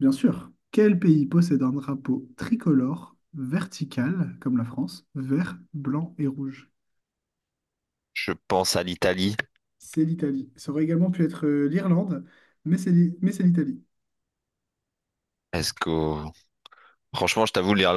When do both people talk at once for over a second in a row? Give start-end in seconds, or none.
none